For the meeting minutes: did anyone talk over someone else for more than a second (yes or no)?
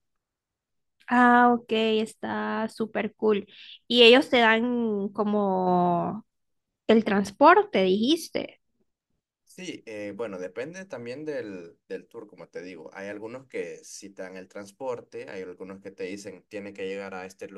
no